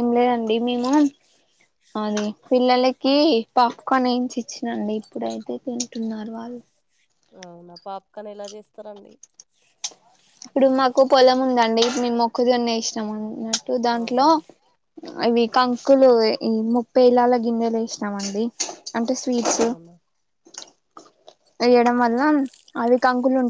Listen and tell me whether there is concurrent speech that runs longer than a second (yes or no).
no